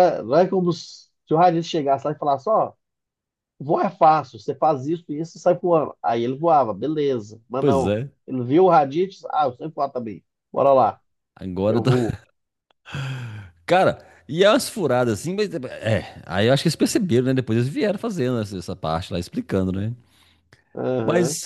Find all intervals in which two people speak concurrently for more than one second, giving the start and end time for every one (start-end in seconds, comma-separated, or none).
none